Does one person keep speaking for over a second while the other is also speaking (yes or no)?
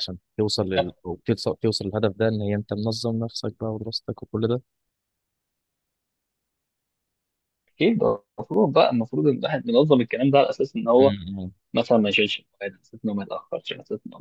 no